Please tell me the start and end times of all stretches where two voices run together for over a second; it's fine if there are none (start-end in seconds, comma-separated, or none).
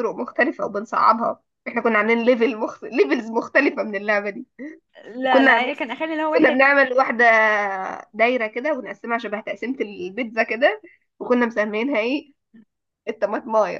none